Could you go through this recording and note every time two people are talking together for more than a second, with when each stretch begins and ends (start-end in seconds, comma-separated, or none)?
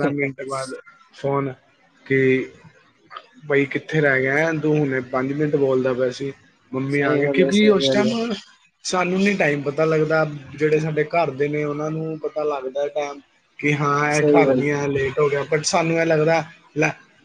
6.7-8.1